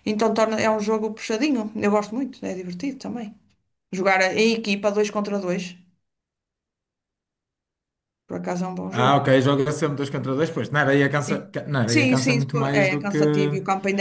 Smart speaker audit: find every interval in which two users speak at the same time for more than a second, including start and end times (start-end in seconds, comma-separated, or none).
11.3-13.2